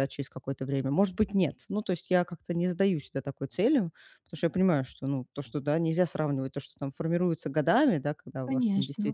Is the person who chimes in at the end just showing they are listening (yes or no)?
yes